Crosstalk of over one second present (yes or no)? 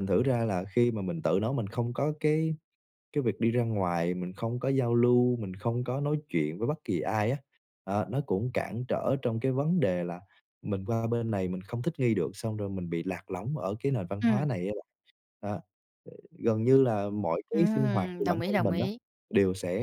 yes